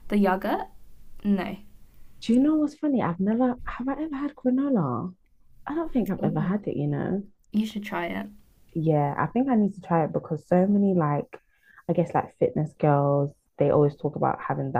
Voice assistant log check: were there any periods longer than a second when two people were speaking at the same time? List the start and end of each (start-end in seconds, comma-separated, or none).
none